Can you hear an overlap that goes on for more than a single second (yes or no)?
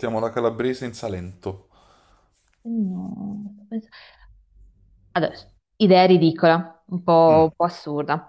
no